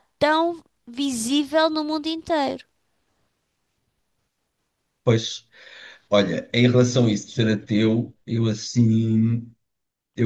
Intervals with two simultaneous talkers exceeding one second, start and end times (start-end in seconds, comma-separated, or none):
none